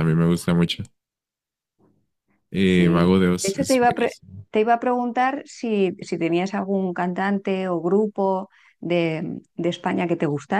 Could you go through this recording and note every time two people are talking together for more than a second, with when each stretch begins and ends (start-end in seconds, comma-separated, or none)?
2.6-4.1